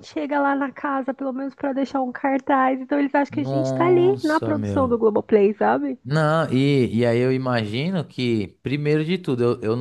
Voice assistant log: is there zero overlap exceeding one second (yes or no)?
no